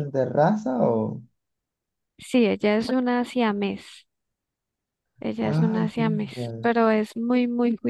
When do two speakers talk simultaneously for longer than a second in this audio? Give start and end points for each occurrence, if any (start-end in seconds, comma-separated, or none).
5.4-6.7